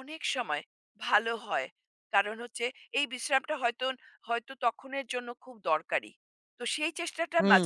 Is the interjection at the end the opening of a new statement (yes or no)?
yes